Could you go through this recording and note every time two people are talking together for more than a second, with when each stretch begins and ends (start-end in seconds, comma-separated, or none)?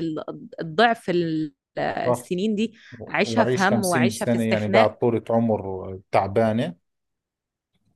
3.1-4.9